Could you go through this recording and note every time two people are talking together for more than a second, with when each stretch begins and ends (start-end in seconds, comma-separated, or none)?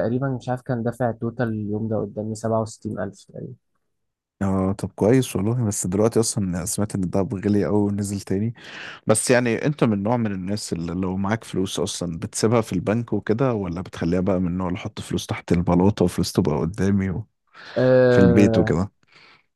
none